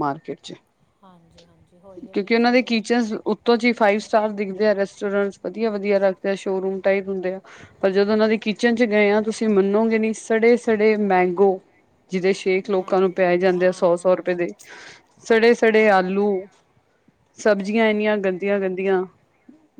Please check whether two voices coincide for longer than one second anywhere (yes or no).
yes